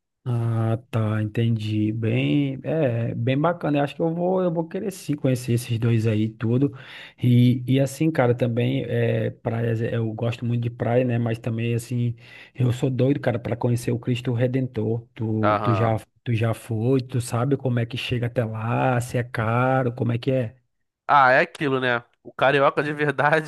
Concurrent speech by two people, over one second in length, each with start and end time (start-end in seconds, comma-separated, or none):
none